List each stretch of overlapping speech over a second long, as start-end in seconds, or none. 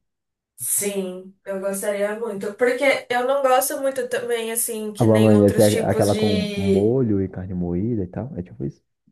5.0-7.0